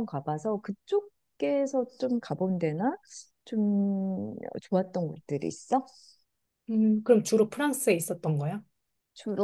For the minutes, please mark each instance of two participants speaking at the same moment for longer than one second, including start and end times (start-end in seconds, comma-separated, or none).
none